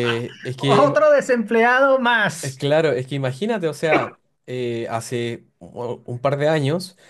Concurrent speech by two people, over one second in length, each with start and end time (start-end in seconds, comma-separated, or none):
none